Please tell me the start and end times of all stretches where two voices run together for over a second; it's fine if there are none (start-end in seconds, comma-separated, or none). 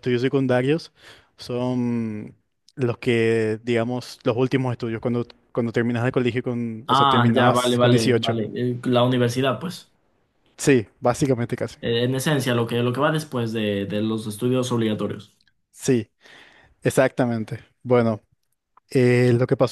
6.9-8.4